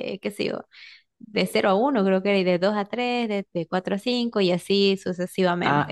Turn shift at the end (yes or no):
yes